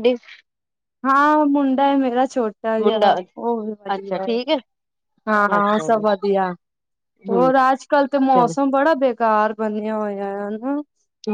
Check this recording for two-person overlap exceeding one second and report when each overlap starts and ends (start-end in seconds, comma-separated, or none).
none